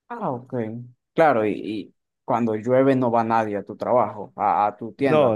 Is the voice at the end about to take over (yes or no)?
yes